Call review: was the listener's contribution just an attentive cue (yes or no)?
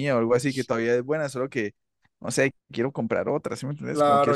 no